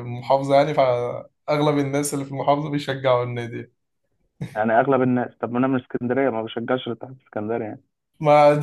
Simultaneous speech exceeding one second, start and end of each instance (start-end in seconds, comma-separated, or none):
none